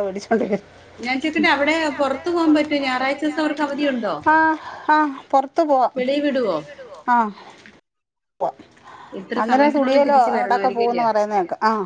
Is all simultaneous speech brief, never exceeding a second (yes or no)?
no